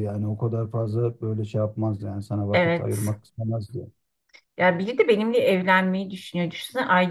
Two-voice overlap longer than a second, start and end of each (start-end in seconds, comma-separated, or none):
none